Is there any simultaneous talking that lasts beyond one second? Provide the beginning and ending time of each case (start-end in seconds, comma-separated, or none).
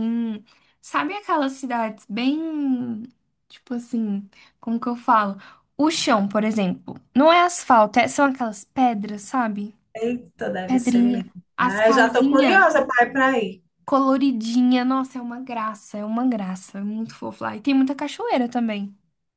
10.7-12.6